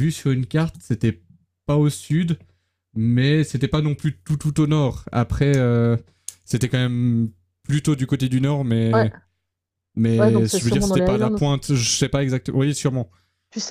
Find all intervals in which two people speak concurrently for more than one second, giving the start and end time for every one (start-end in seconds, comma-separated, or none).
10.2-11.4